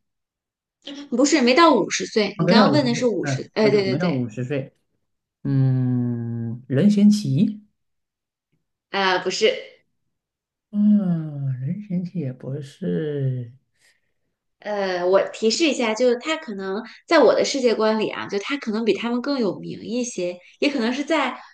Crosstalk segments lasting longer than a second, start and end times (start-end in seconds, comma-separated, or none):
2.4-4.2